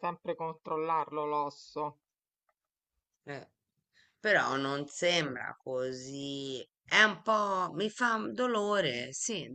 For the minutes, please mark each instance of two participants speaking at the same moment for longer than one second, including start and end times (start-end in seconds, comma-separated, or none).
none